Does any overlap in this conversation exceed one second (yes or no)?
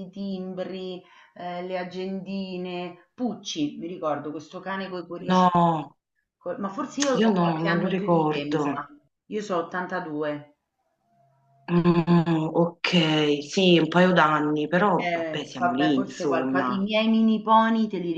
yes